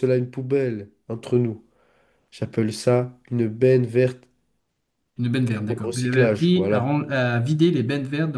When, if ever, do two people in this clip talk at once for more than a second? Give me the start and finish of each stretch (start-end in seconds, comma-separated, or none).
5.6-6.9